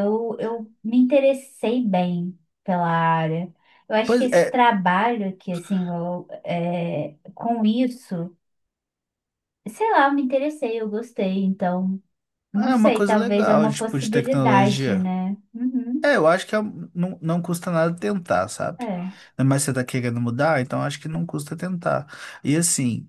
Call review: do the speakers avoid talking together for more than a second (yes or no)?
no